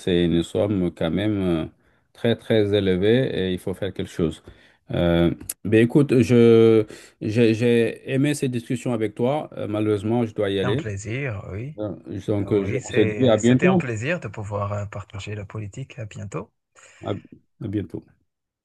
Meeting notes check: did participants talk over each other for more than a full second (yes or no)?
yes